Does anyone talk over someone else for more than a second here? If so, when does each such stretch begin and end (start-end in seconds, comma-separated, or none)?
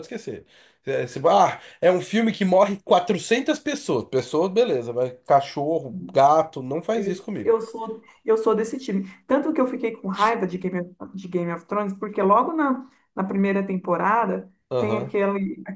none